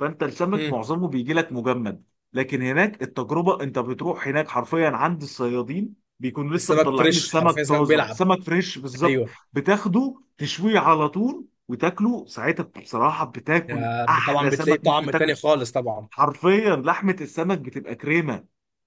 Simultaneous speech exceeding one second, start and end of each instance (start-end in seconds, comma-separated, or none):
6.6-8.2, 13.6-15.4